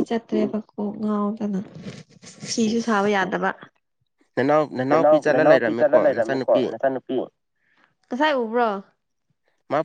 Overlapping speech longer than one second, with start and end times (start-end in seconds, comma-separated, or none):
4.9-6.6